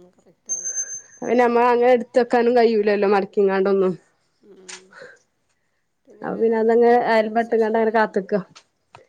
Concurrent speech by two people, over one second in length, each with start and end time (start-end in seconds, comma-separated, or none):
6.3-7.9